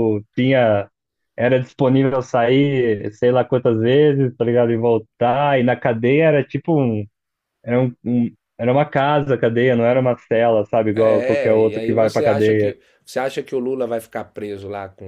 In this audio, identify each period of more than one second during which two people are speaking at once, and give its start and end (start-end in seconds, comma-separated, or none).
10.9-12.8